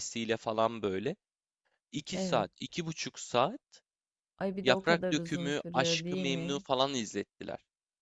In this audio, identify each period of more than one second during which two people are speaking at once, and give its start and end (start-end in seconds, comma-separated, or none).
4.6-6.7